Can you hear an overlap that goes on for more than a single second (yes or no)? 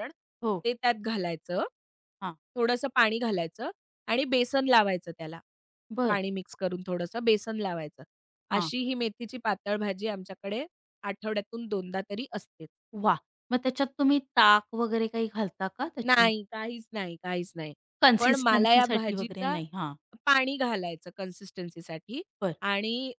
yes